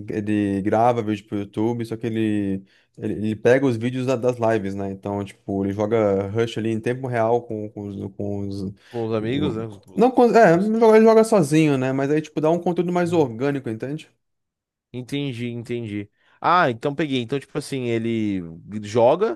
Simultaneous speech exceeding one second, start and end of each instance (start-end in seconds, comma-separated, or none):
none